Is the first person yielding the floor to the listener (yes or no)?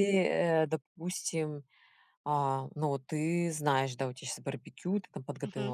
no